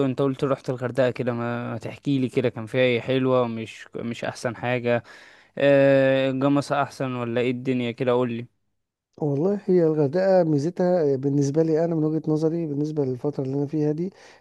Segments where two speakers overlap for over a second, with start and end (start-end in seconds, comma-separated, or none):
none